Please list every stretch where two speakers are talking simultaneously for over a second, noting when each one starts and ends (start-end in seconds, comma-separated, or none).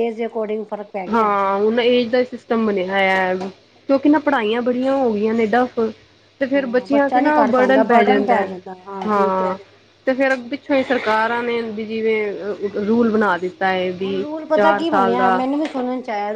6.4-7.8